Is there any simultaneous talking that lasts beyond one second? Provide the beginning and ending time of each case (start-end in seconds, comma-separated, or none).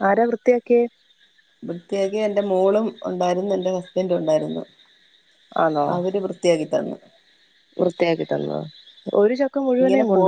none